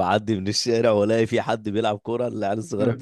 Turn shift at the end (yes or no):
no